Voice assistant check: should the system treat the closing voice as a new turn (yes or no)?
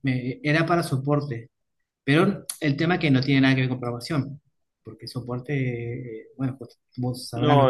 yes